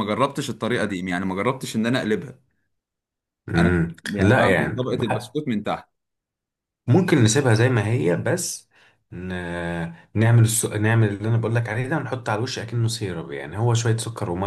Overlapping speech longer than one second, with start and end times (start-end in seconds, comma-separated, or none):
3.6-5.4